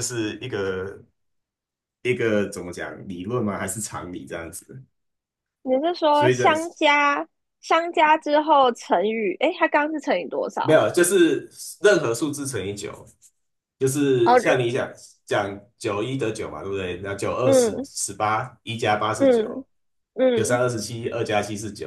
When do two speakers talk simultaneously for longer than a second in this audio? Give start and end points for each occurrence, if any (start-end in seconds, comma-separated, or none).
none